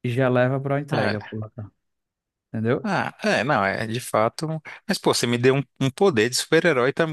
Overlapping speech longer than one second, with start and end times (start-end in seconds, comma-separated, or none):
none